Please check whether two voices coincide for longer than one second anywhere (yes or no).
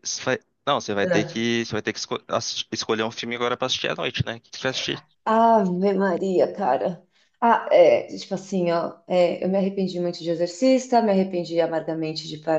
no